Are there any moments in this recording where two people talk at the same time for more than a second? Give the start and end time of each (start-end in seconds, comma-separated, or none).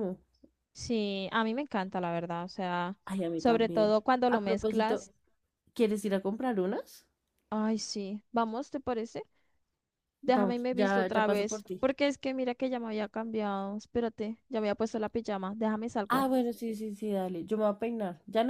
3.4-5.1, 10.2-11.8